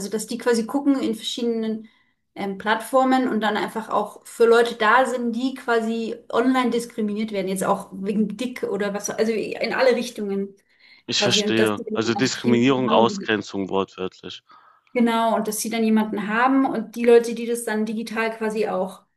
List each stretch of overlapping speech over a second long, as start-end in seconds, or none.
11.1-13.3